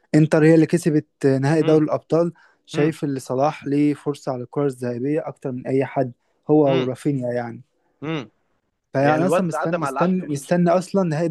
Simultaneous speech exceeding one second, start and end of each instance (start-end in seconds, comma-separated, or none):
9.0-10.4